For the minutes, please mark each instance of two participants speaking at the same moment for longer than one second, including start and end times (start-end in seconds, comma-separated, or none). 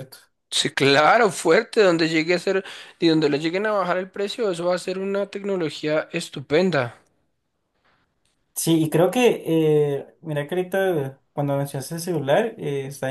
none